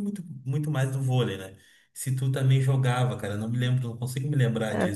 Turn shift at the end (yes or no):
yes